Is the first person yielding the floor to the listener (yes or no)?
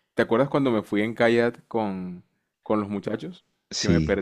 yes